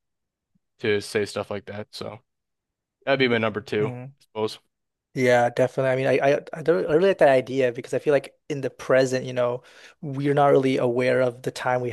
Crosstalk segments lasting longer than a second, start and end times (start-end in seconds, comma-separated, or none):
none